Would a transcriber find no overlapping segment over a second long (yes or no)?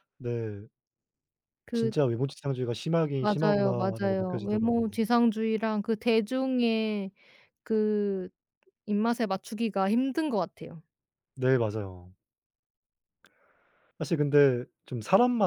no